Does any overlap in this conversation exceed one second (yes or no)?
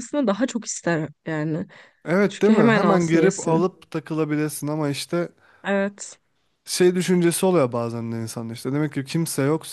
yes